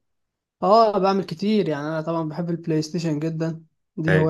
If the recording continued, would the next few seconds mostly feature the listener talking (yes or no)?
no